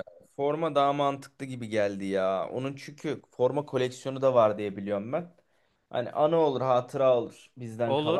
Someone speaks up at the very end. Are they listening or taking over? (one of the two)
taking over